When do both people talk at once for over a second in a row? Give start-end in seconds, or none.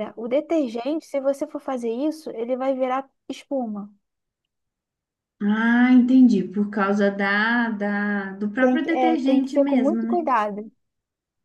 8.6-10.2